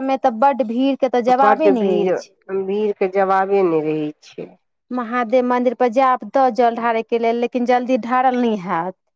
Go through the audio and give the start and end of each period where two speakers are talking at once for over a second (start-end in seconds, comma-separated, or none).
none